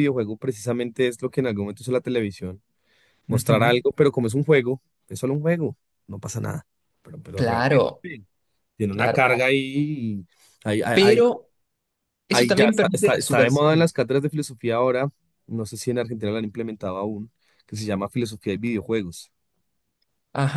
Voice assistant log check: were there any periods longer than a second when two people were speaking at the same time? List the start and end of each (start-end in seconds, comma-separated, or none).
12.3-13.9